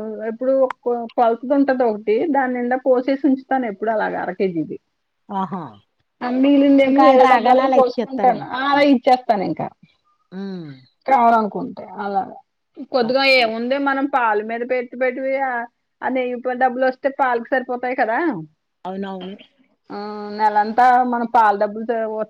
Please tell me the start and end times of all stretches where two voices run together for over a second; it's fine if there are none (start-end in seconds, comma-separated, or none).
6.9-8.4